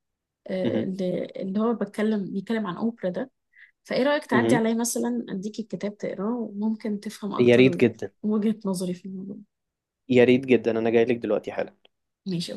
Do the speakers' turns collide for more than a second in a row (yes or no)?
no